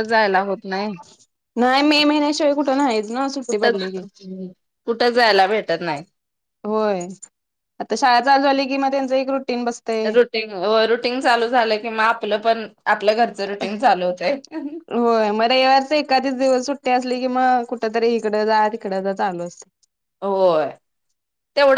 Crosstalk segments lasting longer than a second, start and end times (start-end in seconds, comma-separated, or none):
none